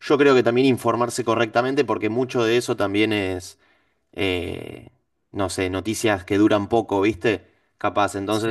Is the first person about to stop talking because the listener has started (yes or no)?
no